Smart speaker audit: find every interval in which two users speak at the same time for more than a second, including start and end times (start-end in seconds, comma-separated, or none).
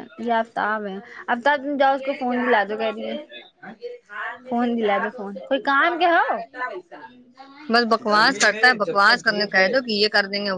8.1-9.7